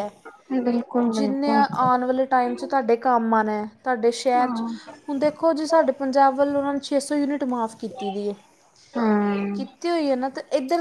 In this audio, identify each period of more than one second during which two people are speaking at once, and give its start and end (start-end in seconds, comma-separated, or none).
none